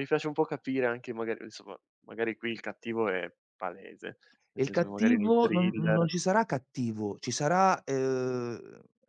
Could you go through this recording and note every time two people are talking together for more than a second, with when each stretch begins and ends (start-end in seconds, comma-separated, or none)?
4.5-6.1